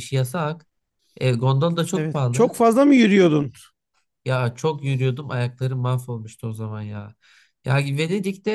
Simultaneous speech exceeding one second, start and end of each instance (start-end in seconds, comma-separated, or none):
none